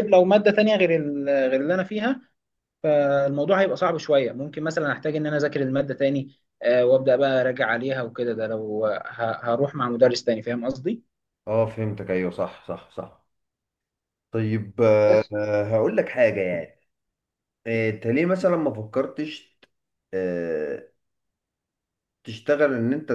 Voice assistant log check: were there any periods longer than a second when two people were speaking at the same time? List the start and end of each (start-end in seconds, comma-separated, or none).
none